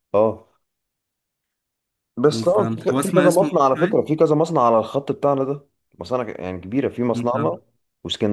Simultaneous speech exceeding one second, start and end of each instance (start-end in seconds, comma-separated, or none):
2.5-4.1